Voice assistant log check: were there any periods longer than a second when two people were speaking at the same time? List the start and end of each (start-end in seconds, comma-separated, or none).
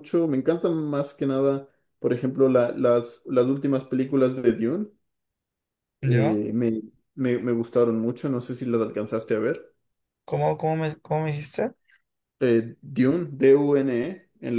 none